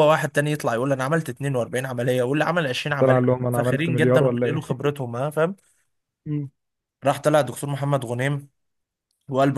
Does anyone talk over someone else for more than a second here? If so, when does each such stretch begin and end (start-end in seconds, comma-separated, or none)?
3.0-4.7